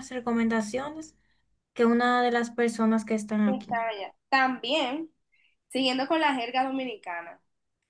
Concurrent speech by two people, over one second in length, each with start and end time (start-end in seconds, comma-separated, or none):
none